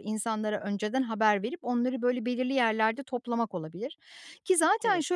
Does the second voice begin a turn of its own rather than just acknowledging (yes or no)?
no